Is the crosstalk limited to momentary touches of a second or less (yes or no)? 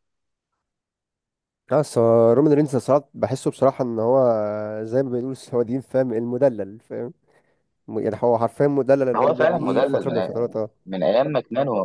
no